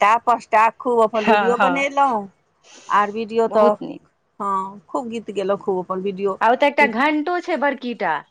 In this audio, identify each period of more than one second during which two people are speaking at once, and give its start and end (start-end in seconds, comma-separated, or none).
none